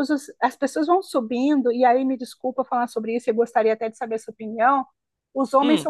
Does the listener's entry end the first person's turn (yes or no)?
no